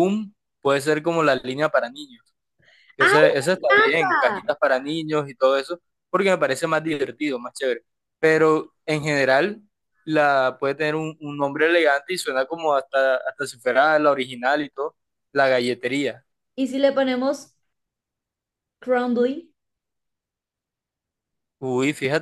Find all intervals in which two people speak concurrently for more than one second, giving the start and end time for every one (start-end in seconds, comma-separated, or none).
3.0-4.4